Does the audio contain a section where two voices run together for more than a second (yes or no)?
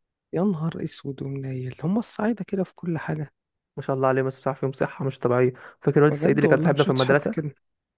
yes